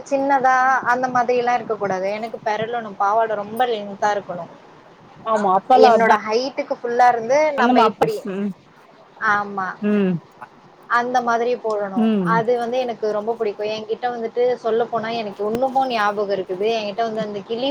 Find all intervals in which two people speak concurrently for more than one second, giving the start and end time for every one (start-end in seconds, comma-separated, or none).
none